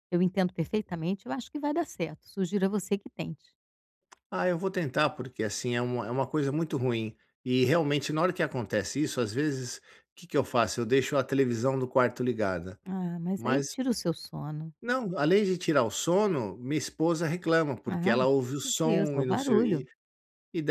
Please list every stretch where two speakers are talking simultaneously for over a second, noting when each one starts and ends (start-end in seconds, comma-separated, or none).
17.9-19.8